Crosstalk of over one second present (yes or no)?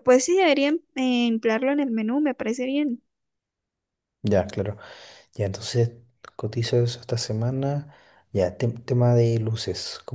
no